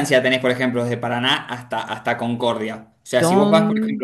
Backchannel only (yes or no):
yes